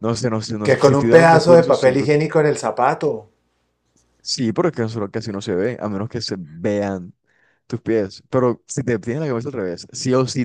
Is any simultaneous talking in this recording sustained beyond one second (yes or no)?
yes